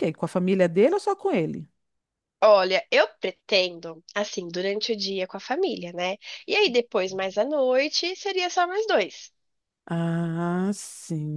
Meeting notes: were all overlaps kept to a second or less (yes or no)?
yes